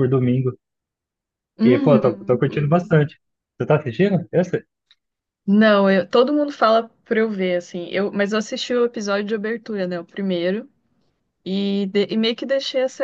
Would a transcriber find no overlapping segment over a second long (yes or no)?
no